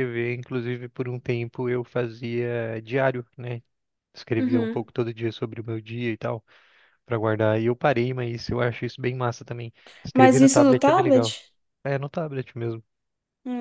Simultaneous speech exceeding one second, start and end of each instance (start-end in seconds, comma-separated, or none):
10.1-11.3